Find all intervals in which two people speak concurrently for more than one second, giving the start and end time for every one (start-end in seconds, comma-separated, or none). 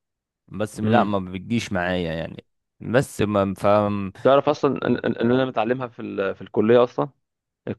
none